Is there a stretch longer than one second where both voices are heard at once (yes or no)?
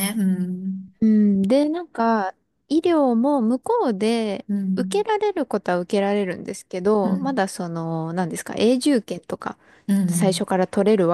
no